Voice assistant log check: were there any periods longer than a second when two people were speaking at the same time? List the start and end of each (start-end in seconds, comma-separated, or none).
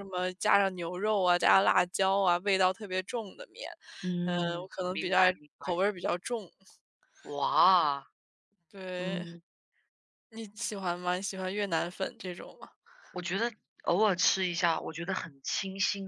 4.2-5.8